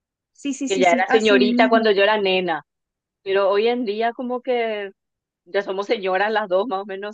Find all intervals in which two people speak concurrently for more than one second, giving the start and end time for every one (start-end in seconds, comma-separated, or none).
0.7-1.9